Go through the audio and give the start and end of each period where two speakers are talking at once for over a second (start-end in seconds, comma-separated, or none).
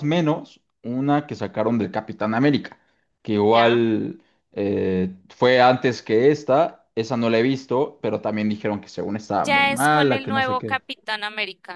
9.4-10.8